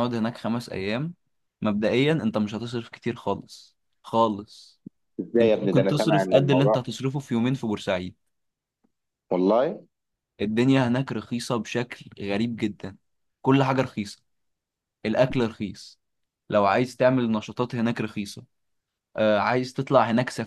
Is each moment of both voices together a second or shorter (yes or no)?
no